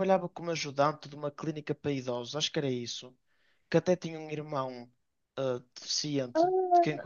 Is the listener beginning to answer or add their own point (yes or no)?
yes